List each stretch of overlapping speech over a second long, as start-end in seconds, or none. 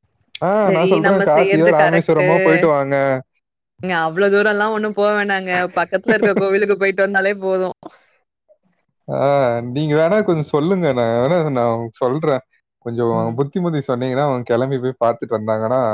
0.7-2.3